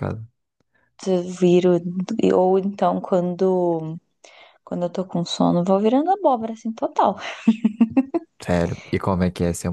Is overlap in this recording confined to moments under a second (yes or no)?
yes